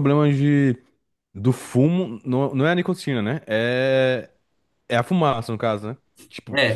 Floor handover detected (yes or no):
yes